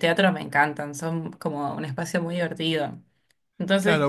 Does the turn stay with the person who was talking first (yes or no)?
no